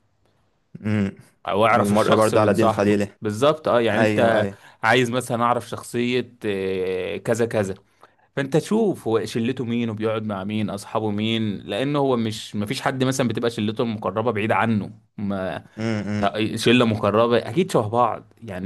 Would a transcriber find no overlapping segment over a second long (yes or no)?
no